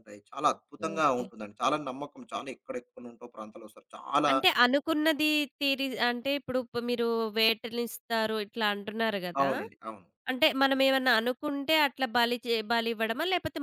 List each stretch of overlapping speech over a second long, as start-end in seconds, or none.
none